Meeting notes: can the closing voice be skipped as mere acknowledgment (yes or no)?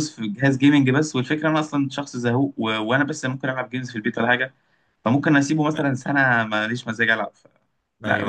no